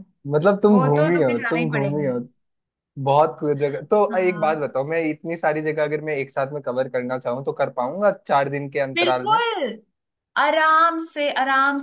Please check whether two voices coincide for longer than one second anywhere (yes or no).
yes